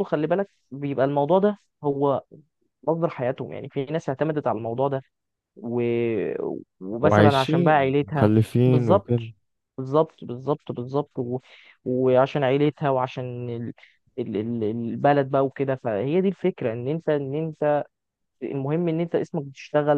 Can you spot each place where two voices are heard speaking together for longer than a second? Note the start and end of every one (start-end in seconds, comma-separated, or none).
7.0-9.2